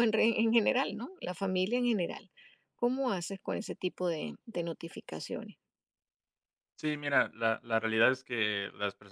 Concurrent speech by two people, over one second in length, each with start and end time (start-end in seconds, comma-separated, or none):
none